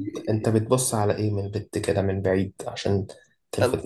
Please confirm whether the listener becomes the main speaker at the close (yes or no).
yes